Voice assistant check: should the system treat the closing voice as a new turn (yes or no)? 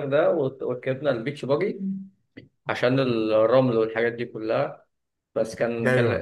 no